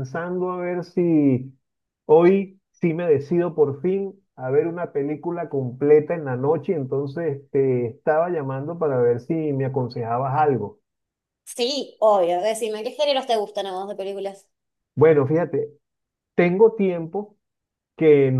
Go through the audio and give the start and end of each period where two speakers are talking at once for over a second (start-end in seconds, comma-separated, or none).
none